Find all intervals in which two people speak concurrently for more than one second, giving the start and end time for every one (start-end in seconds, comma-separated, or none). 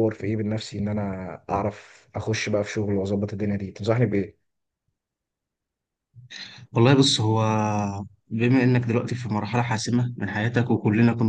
none